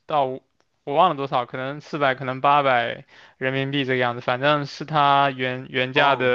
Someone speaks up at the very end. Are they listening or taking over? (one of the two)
listening